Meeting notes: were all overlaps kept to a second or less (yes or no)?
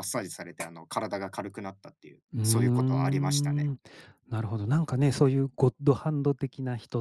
no